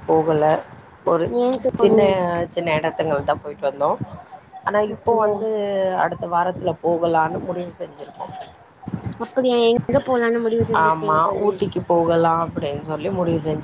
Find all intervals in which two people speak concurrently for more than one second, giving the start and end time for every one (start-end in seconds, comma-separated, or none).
none